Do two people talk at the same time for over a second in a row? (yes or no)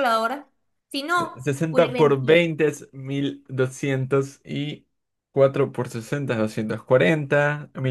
yes